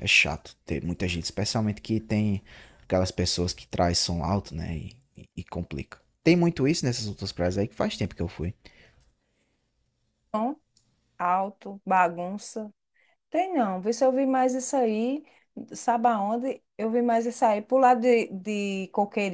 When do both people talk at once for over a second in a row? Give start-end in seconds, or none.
none